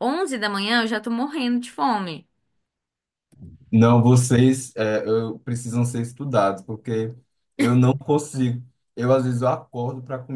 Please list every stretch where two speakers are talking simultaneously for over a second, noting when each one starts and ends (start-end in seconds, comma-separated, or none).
none